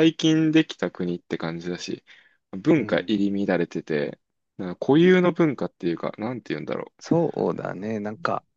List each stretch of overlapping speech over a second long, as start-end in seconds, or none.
none